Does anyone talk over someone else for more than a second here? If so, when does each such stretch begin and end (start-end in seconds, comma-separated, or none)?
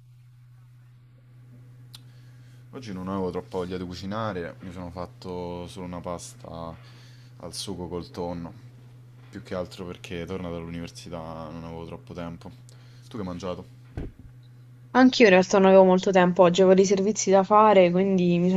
none